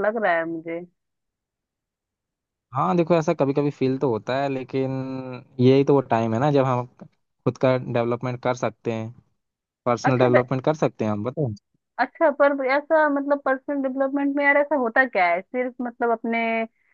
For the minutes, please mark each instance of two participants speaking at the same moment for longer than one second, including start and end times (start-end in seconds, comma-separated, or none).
none